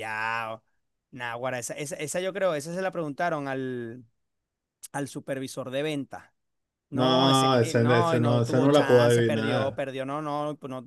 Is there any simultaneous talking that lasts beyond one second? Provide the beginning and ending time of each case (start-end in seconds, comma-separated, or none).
6.9-9.8